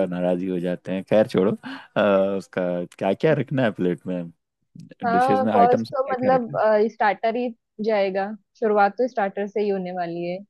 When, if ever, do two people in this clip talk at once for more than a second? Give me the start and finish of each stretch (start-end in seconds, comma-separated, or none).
5.1-6.5